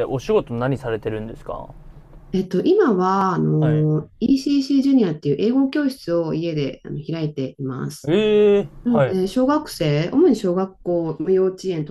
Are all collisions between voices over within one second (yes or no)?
yes